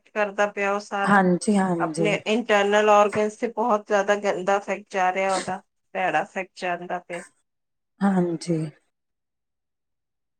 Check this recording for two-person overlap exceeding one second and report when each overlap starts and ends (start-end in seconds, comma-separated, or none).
none